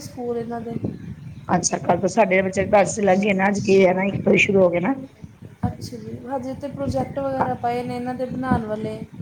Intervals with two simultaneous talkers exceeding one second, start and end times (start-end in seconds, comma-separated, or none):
none